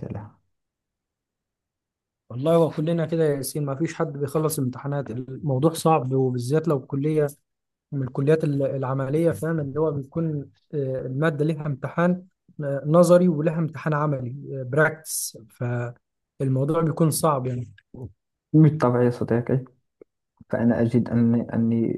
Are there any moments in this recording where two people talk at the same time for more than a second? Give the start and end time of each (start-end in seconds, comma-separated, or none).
none